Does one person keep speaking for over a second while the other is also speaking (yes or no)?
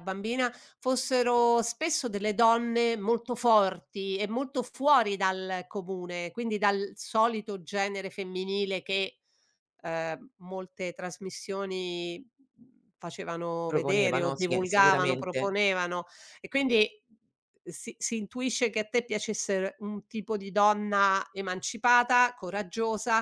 yes